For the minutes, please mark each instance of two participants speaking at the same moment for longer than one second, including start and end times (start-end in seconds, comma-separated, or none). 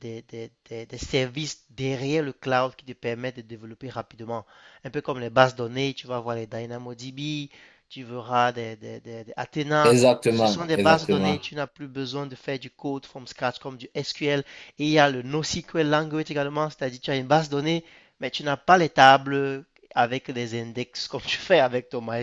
9.8-11.4